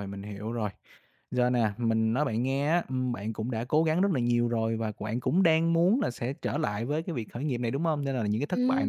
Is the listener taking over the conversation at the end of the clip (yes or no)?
no